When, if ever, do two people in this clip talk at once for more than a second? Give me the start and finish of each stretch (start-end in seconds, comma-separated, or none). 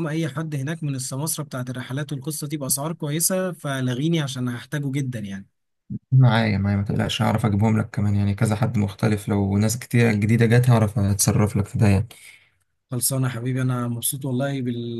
none